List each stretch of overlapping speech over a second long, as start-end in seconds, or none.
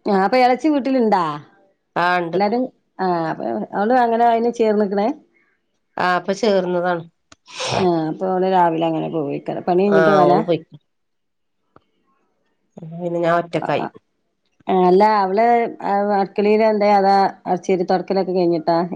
none